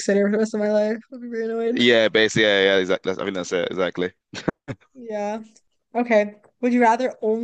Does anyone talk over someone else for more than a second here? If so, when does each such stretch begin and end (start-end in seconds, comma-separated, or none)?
none